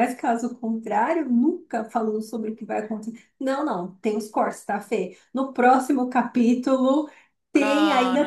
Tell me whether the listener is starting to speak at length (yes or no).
no